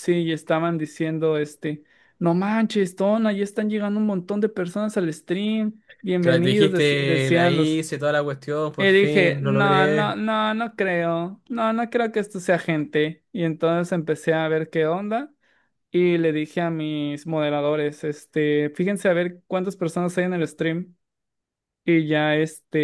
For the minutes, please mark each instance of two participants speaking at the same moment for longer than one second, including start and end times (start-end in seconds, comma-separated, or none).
6.2-7.8, 8.8-10.2